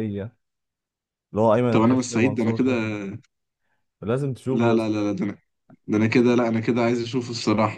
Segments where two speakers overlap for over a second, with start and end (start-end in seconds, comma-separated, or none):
1.7-3.0